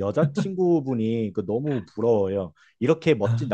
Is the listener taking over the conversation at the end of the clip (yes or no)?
no